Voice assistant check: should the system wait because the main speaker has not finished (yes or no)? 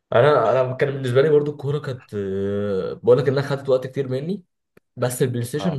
yes